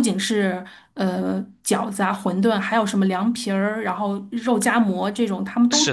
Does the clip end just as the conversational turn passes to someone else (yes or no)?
yes